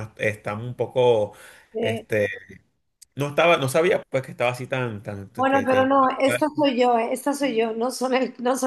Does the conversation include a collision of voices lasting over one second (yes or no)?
no